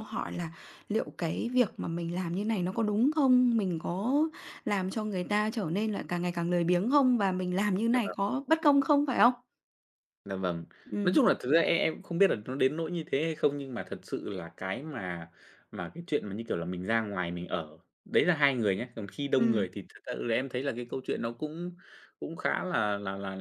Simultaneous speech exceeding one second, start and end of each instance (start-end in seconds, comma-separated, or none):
none